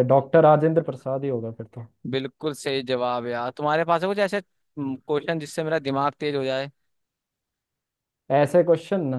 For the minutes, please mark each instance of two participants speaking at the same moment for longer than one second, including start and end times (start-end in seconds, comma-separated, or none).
none